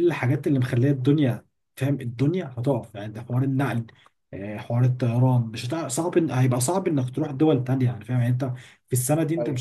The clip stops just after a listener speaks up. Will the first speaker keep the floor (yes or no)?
yes